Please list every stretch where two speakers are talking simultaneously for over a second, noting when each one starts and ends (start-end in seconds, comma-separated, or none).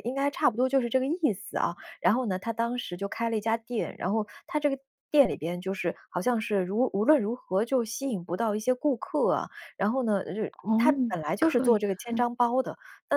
10.5-12.2